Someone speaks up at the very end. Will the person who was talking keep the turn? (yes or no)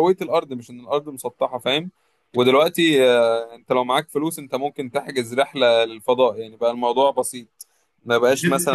no